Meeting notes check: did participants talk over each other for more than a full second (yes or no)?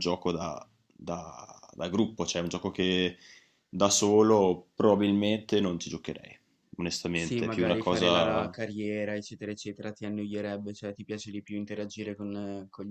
yes